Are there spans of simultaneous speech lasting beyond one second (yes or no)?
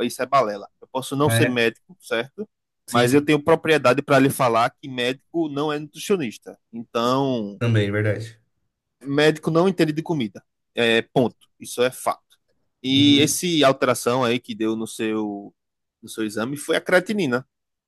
no